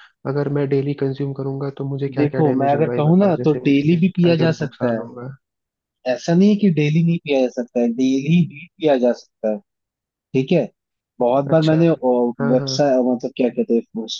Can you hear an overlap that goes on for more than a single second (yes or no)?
yes